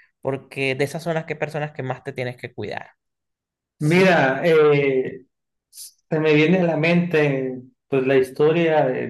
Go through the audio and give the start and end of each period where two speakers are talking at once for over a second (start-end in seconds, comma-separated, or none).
none